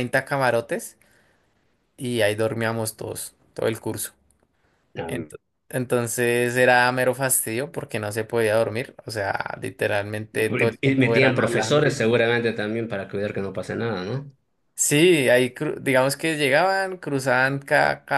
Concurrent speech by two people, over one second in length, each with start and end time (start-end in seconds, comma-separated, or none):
10.3-11.9